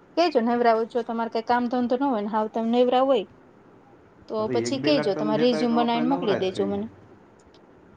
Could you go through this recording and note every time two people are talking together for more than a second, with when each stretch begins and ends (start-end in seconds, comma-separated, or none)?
4.5-6.9